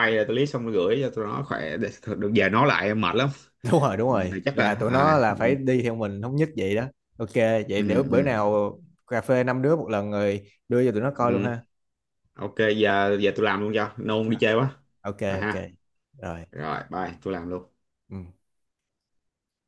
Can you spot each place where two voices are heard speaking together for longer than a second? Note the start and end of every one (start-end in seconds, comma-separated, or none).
4.1-5.5